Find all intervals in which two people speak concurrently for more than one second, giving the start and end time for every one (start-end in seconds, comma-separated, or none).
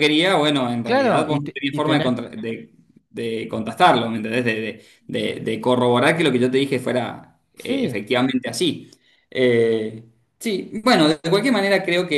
0.8-2.2